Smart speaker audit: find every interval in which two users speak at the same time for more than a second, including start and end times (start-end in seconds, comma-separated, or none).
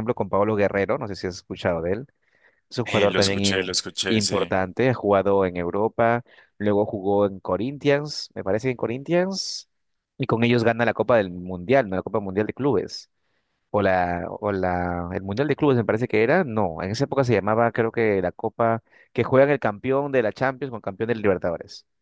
2.9-4.5